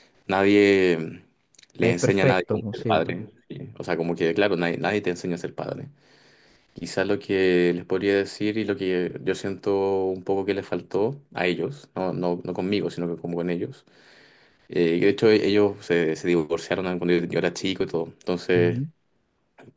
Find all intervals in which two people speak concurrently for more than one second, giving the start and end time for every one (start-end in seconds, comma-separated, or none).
1.8-3.1